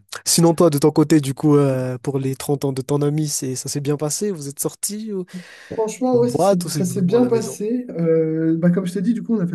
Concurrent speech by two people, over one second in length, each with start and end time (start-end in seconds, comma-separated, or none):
6.1-7.6